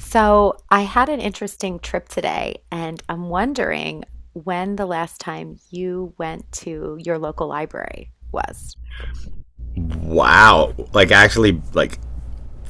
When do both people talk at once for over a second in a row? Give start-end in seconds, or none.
none